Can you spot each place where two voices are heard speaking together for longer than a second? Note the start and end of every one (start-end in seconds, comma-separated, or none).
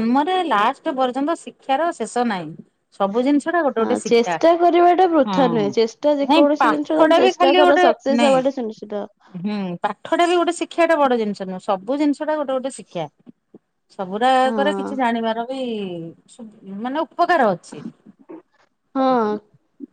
6.3-8.4